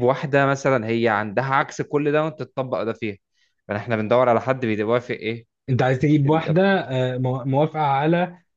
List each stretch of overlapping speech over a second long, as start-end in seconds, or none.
none